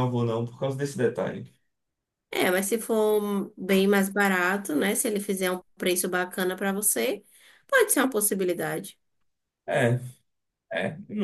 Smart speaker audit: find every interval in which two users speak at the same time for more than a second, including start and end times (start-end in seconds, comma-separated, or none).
none